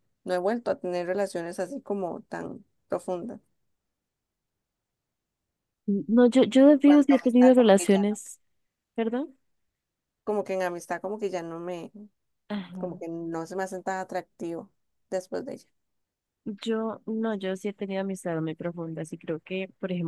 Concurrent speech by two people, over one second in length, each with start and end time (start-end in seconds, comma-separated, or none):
6.8-8.2